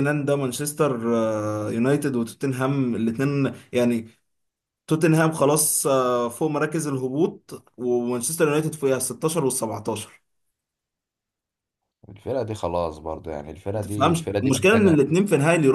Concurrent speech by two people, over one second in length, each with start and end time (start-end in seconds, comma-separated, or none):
13.7-15.0